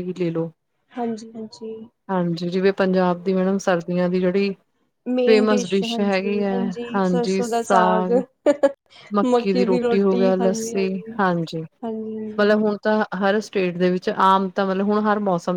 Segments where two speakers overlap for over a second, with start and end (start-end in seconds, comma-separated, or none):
none